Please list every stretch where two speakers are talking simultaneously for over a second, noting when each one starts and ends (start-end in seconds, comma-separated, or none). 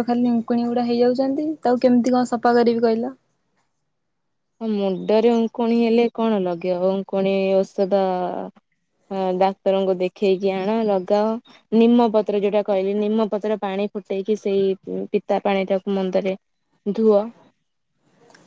none